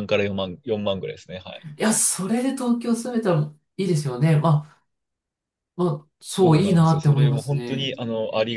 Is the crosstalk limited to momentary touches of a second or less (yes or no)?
no